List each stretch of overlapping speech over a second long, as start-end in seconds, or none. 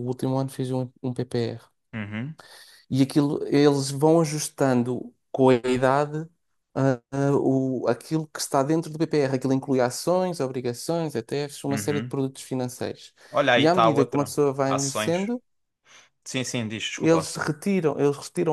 13.6-15.3